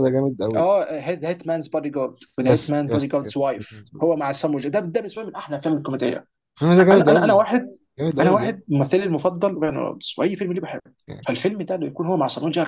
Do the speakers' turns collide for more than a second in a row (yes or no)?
yes